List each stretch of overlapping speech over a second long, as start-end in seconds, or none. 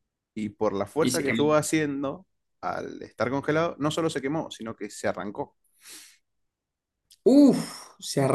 none